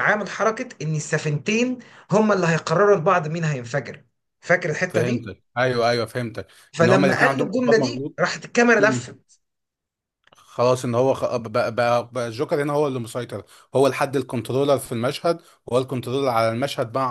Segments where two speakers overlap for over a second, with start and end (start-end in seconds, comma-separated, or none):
6.8-8.2